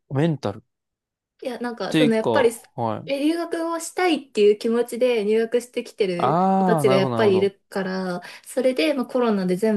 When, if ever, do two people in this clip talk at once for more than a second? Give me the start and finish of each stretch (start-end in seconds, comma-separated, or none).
6.2-7.5